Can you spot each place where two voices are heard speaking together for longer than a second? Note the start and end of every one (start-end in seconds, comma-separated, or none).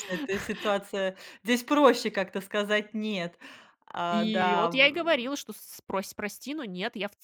4.1-5.3